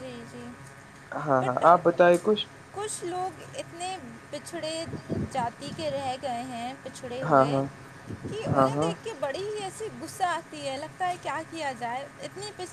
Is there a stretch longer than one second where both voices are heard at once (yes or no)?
no